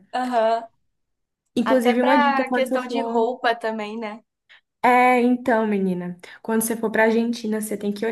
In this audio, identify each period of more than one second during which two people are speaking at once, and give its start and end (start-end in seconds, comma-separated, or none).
1.6-3.3